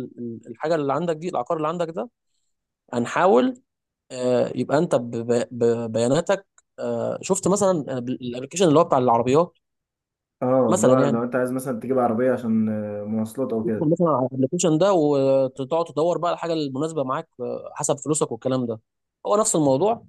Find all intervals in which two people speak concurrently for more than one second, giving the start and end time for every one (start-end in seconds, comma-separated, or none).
none